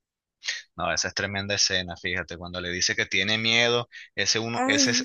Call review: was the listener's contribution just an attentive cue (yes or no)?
yes